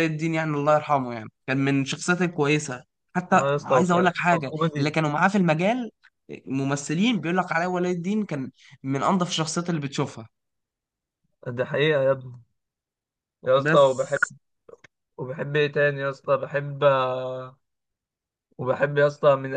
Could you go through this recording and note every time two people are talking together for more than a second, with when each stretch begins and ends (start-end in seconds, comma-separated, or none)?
3.3-4.9